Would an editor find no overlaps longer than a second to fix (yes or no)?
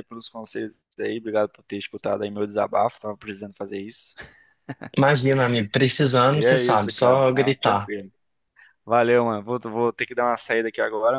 no